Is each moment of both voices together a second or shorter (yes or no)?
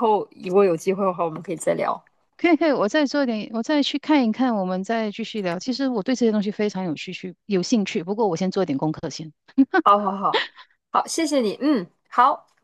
yes